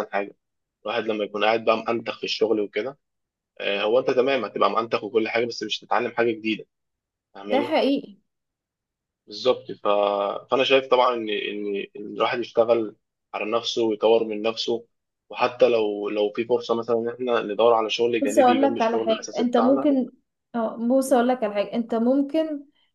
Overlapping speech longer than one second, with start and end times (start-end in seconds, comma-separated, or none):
18.2-19.9